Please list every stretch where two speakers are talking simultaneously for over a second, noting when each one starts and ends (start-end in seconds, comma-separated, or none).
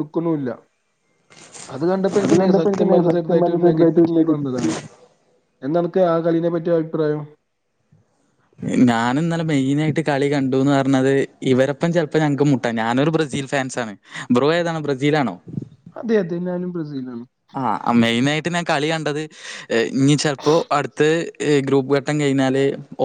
2.7-4.7